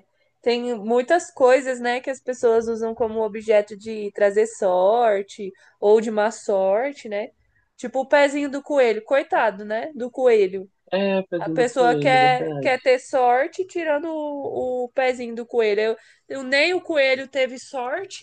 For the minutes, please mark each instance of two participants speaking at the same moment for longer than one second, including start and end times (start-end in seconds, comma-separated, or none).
11.4-12.9